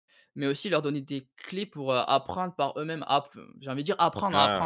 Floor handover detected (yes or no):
yes